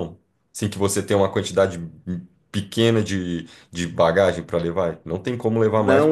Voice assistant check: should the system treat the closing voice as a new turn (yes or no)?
yes